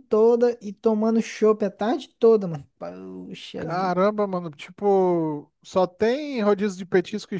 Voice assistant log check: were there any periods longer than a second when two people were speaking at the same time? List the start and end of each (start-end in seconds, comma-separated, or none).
none